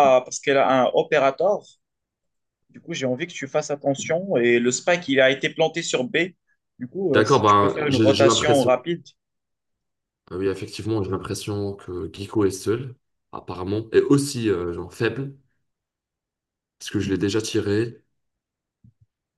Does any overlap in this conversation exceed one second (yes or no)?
yes